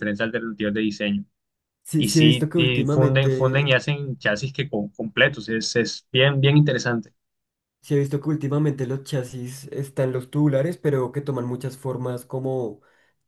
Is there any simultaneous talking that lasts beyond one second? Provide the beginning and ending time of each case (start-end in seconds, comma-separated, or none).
2.0-3.8